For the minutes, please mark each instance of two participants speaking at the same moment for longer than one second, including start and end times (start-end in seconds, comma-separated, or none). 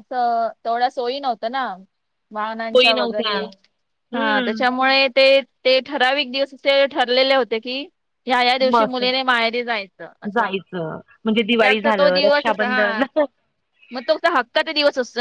11.5-13.0